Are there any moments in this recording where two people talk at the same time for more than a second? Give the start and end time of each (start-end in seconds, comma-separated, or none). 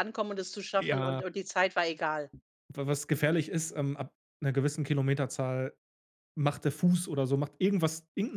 none